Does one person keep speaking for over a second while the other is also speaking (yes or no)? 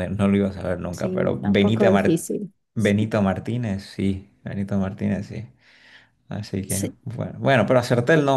yes